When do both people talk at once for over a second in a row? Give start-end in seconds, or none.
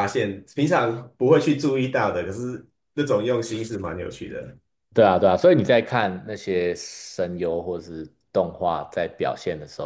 none